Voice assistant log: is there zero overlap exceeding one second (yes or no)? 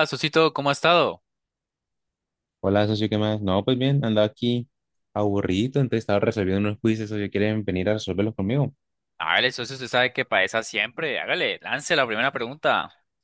yes